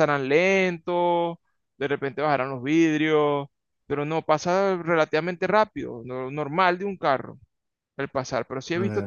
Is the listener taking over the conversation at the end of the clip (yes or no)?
yes